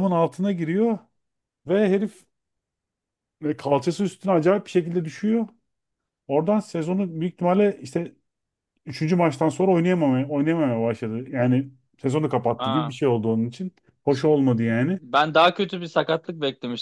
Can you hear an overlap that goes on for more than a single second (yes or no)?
no